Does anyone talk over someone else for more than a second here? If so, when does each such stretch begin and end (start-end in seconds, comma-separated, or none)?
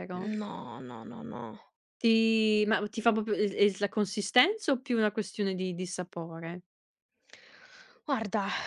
none